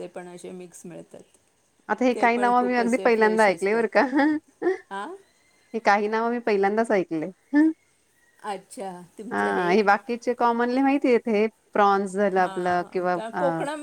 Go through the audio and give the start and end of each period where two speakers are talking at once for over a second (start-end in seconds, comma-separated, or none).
2.1-4.0